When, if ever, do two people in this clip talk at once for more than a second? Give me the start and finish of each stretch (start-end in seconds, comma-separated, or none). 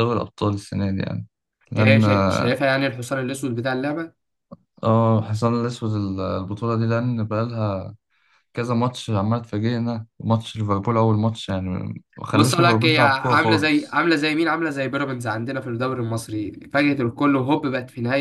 12.3-14.0